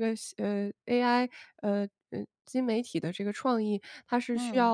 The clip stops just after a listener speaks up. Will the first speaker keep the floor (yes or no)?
yes